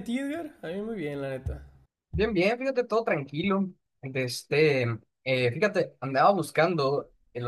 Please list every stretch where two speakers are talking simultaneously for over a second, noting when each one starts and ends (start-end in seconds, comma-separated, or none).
none